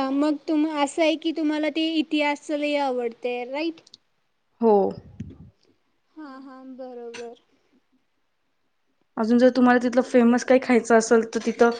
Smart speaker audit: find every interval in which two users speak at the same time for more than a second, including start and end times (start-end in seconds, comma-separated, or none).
none